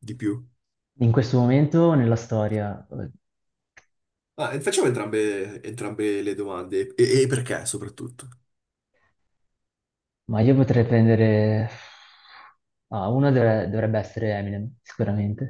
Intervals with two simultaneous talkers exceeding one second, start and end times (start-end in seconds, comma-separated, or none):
none